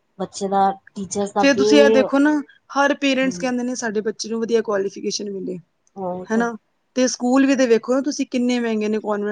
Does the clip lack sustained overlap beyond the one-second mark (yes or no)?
yes